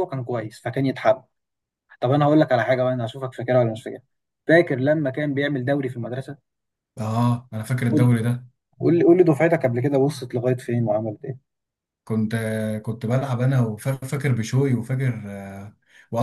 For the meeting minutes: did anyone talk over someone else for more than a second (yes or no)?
no